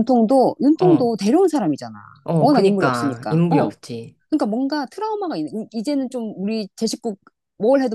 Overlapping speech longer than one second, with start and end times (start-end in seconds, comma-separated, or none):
2.4-3.7